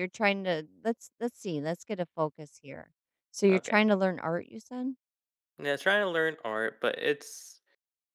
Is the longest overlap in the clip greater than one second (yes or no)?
no